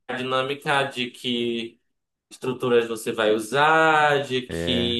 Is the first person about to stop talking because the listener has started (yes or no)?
no